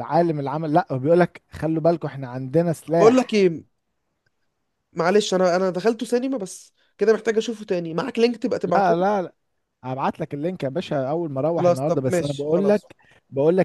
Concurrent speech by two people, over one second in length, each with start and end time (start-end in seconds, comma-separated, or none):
11.6-12.8